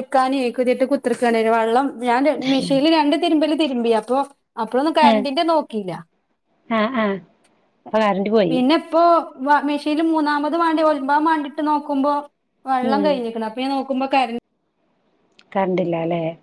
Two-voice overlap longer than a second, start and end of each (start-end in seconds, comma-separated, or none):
none